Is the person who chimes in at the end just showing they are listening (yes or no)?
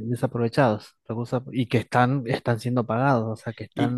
no